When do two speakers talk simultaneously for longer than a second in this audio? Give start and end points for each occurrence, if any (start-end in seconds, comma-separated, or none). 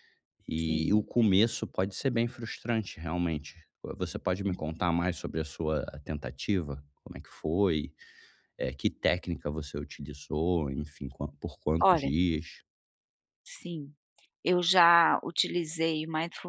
none